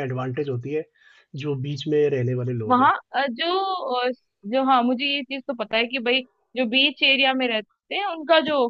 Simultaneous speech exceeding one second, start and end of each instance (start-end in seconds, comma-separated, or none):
none